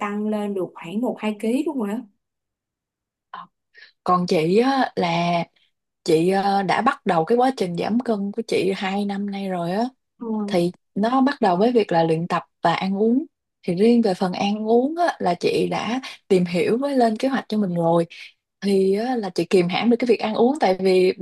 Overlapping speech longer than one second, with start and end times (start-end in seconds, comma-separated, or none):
none